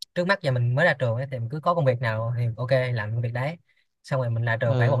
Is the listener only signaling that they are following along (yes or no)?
yes